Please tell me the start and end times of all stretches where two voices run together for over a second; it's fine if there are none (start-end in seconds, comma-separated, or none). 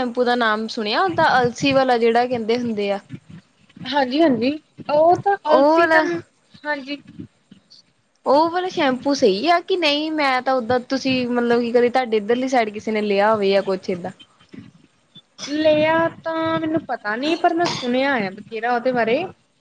none